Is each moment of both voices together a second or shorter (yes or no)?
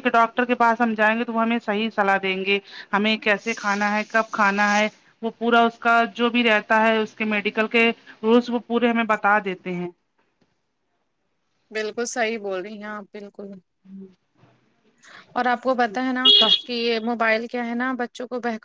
yes